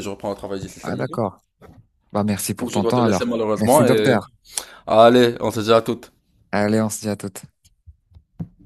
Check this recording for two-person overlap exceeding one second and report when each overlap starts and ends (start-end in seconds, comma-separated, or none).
2.5-4.2